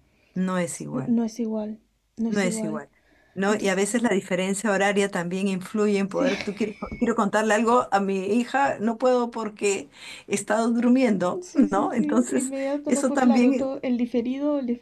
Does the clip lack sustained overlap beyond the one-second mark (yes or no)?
no